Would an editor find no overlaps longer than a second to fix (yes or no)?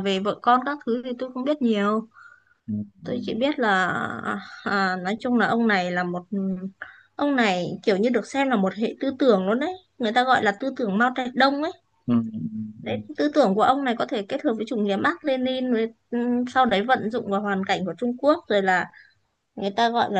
yes